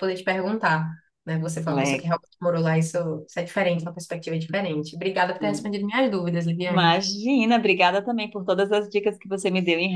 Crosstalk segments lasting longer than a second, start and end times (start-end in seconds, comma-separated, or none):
none